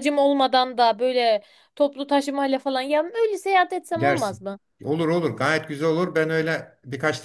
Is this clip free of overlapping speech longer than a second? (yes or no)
yes